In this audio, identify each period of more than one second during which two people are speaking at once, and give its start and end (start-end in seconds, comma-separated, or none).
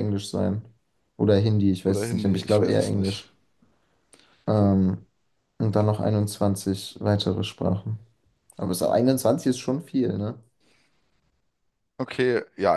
1.8-3.2